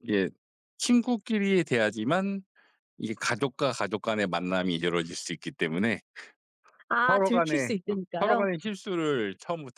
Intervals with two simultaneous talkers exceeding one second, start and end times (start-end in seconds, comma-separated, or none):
7.1-8.5